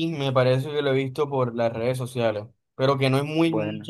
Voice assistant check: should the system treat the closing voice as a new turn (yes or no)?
no